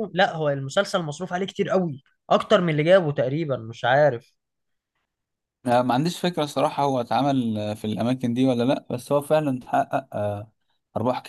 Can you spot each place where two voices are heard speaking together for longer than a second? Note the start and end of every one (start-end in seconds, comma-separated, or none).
none